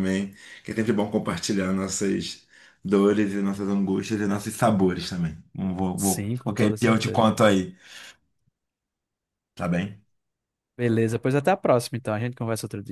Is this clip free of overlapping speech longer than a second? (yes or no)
no